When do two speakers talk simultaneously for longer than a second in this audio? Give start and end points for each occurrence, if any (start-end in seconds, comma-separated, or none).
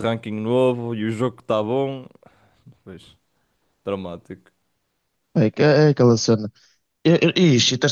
none